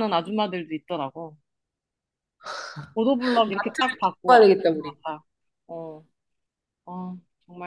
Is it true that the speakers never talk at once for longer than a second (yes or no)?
no